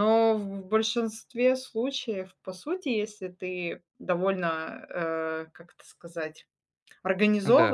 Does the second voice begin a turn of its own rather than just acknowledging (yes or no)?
no